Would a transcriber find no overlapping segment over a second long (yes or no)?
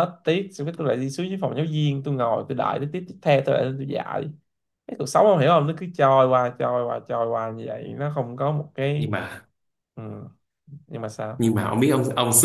yes